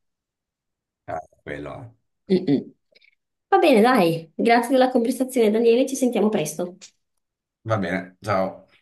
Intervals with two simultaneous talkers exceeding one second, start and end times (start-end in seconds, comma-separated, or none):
none